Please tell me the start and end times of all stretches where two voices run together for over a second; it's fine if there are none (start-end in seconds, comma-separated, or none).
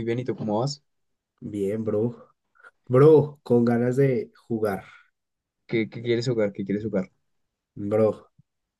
none